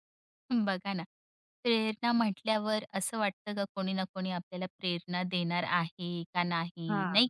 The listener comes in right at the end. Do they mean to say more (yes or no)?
no